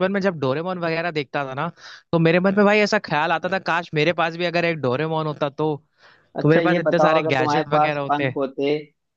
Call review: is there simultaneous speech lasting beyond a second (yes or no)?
yes